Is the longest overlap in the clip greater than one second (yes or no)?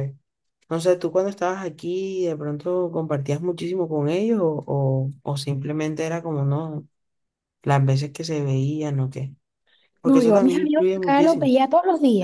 yes